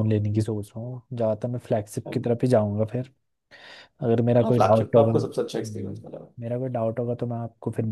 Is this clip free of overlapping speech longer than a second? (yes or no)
no